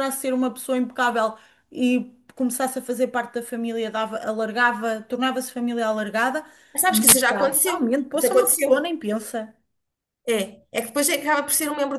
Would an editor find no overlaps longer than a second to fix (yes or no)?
no